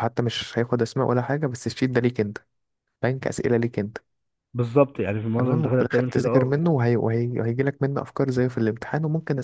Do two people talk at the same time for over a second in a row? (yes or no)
yes